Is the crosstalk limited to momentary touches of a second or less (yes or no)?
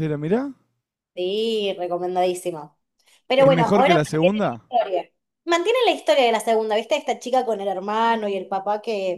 no